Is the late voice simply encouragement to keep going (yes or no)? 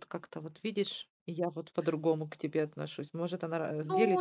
no